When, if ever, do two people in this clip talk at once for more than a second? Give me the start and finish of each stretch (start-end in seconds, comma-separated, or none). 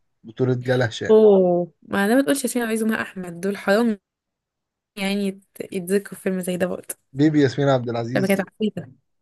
none